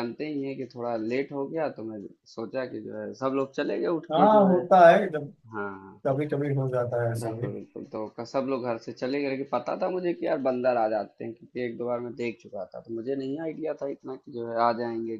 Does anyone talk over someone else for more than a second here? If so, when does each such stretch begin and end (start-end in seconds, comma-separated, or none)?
none